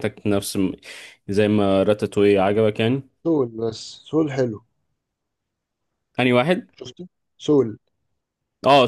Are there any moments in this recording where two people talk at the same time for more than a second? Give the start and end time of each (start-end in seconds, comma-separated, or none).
none